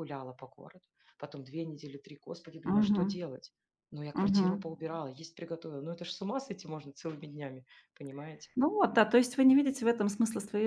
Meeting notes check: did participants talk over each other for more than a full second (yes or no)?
no